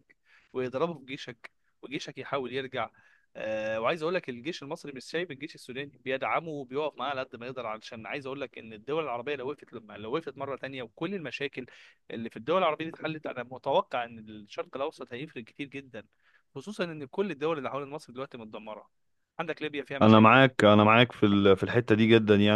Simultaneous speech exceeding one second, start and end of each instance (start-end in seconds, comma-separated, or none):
none